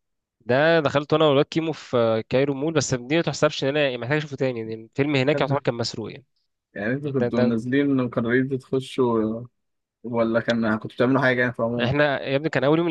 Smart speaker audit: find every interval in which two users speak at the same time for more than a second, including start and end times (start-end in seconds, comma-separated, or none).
none